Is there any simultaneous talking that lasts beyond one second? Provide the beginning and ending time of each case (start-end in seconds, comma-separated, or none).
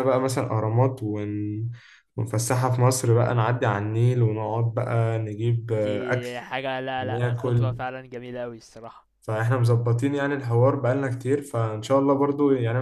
none